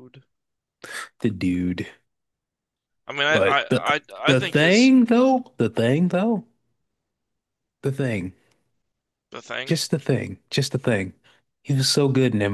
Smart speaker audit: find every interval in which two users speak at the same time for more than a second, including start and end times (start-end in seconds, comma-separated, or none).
3.3-4.9